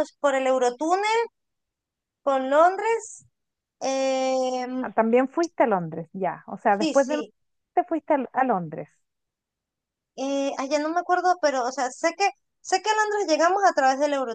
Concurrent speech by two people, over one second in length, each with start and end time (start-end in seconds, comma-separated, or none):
none